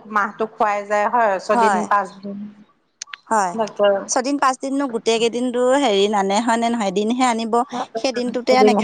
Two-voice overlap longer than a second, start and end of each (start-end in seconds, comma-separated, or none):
none